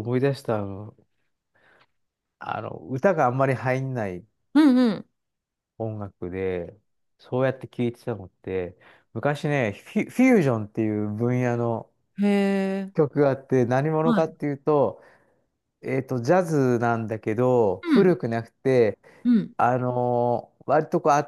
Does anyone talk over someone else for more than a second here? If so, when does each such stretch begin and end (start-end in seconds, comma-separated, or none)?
none